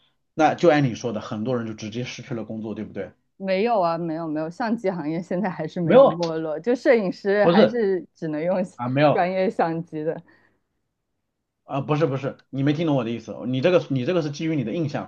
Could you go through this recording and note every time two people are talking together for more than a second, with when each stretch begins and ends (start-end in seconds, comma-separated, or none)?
none